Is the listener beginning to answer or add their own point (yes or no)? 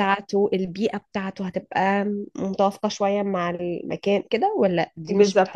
yes